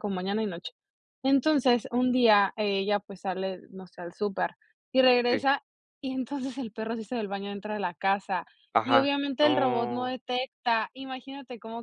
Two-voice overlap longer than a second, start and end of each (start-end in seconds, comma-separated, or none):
8.8-10.1